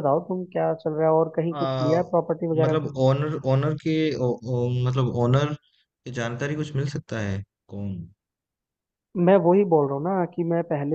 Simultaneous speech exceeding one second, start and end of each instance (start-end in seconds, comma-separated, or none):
none